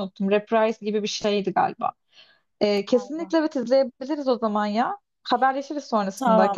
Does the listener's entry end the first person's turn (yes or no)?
yes